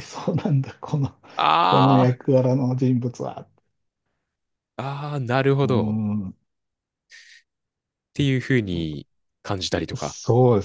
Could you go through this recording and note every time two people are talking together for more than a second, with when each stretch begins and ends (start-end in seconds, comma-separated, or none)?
none